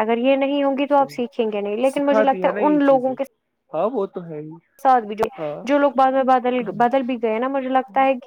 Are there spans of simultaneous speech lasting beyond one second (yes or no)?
yes